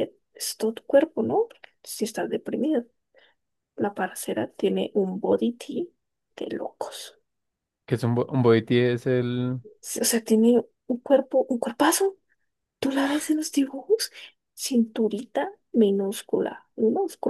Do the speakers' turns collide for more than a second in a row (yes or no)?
no